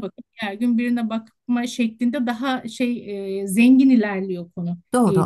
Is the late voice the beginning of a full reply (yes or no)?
yes